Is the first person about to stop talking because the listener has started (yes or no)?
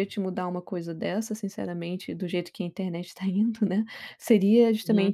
no